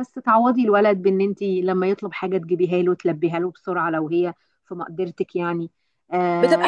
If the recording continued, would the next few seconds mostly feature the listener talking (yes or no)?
yes